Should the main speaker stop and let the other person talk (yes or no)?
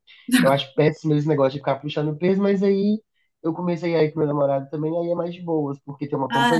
no